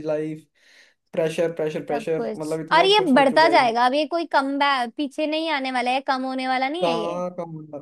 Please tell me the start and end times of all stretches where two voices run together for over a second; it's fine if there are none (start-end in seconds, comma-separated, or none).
1.9-3.8